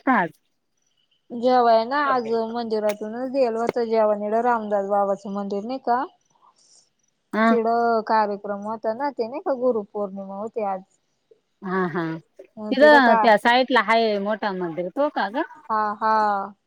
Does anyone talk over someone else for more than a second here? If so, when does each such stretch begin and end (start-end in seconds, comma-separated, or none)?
none